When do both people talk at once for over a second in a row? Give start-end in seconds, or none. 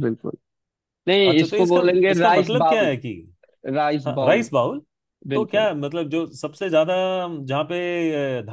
1.3-3.0